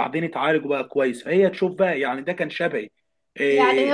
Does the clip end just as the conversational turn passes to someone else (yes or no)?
yes